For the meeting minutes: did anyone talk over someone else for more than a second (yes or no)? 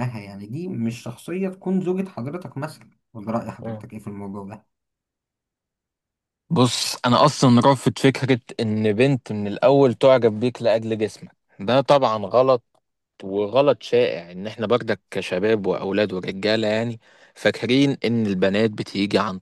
no